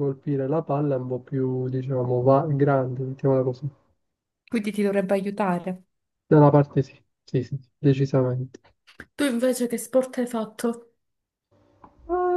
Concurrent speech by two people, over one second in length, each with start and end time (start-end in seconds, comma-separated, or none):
none